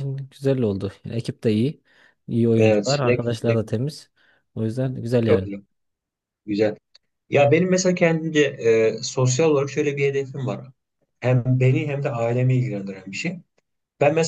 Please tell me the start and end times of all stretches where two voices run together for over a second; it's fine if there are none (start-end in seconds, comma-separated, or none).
2.5-3.8